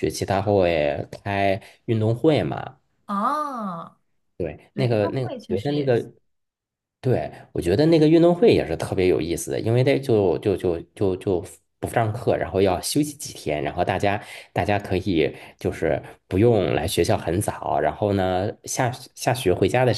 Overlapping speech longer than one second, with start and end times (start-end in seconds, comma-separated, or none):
4.7-6.1